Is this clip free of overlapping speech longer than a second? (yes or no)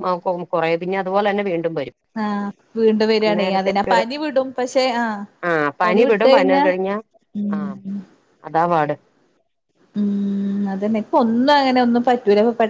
yes